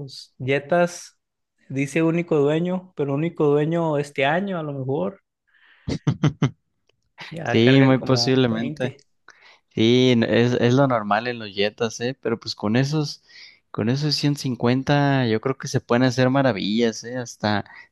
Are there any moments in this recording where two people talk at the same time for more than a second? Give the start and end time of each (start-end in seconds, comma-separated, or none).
7.4-8.9